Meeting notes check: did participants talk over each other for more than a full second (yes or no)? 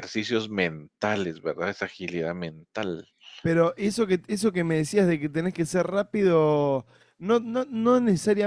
no